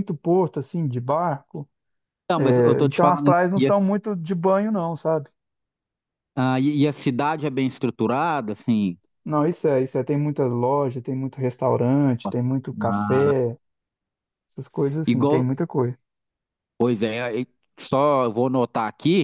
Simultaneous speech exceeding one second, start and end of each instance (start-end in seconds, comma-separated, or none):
2.4-3.7